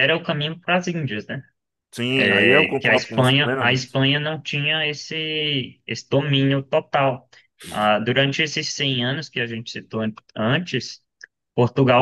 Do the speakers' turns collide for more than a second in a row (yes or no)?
yes